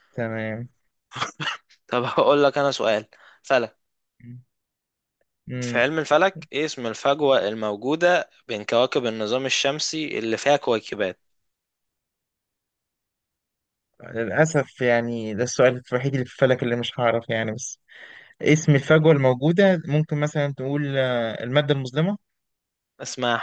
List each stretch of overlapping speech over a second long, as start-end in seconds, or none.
none